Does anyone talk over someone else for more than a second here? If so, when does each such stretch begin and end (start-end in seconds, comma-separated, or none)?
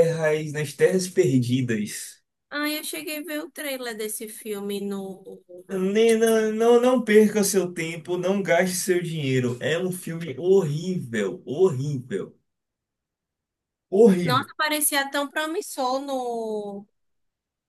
none